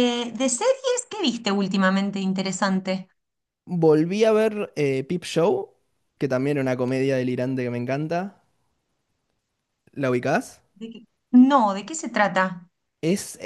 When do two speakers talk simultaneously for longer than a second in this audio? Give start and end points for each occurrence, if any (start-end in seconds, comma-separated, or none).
none